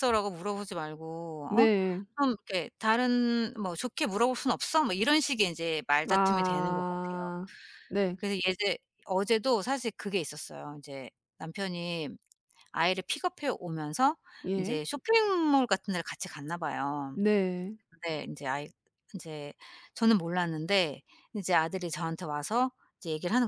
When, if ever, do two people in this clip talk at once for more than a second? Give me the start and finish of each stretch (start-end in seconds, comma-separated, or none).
6.1-7.3